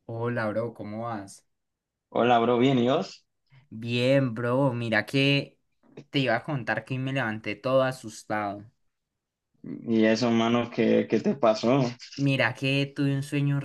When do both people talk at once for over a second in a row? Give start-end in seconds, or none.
none